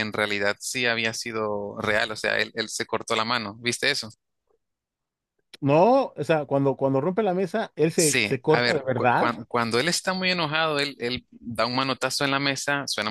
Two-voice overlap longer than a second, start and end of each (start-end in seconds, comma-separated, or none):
8.0-9.3